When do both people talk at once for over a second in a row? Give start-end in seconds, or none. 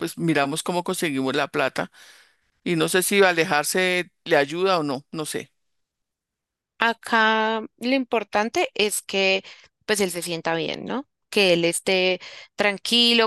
none